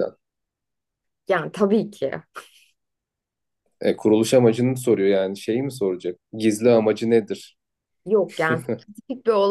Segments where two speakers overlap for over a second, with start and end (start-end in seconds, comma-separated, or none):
none